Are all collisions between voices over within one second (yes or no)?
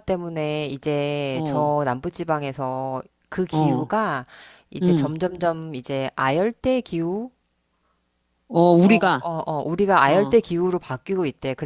yes